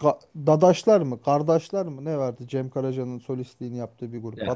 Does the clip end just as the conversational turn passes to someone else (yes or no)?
yes